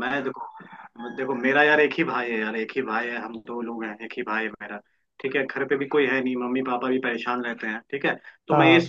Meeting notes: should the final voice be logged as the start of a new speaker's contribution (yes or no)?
no